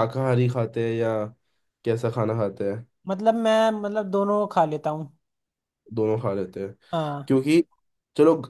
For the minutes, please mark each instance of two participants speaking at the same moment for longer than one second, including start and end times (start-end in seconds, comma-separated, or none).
none